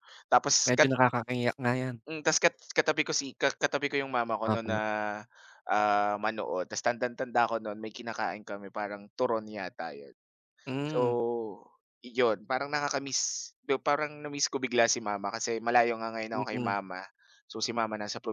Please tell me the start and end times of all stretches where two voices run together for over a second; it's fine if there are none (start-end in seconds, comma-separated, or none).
none